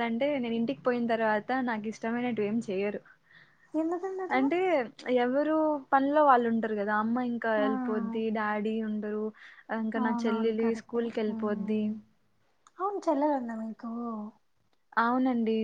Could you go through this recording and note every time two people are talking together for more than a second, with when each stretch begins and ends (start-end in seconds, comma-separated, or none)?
10.0-11.8